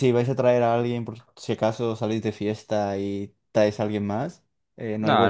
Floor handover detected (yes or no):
yes